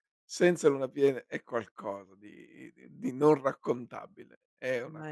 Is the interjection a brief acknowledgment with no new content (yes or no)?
yes